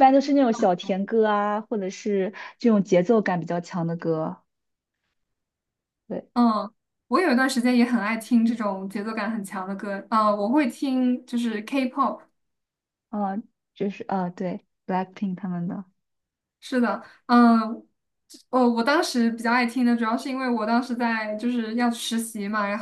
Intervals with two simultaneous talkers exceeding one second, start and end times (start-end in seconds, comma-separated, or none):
none